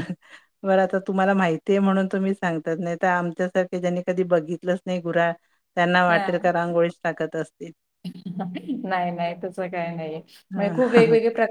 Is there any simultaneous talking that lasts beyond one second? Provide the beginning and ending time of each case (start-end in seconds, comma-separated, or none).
none